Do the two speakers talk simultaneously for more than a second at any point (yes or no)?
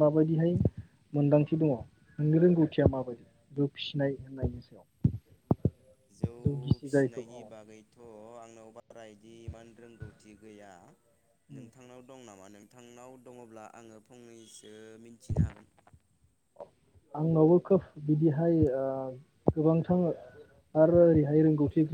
no